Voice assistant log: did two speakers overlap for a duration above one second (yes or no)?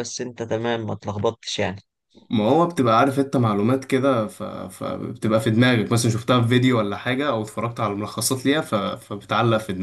no